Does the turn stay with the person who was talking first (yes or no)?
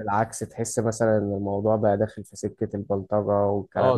no